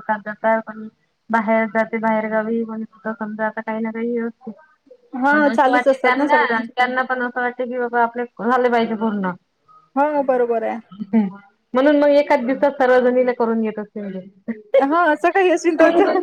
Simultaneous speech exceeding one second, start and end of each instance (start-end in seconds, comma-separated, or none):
5.3-6.7